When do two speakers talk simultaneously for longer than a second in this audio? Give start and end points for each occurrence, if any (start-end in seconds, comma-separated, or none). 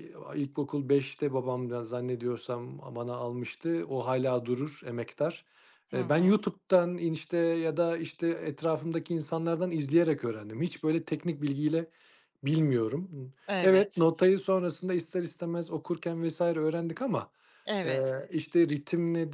none